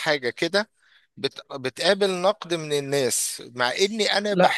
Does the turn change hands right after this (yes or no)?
no